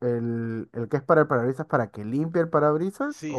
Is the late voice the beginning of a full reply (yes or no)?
yes